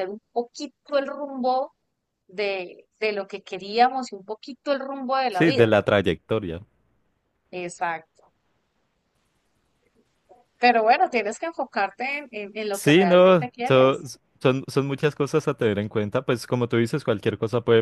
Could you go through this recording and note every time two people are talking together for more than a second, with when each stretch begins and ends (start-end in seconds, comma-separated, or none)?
12.7-14.0